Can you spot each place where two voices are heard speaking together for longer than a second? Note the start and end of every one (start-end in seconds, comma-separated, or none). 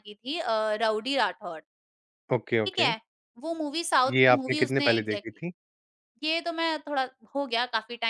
4.1-5.4